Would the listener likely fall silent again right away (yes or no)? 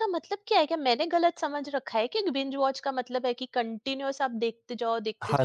no